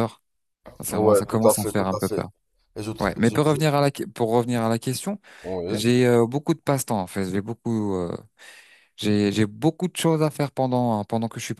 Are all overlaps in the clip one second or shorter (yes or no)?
no